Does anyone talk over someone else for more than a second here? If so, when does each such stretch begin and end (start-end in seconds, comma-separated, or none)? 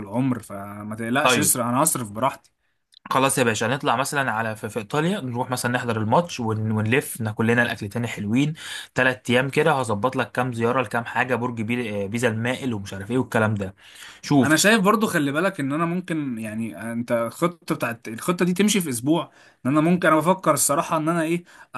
none